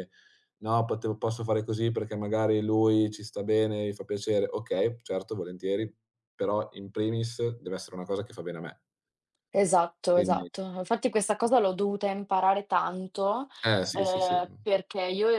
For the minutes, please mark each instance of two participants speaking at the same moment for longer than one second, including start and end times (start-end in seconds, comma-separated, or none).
none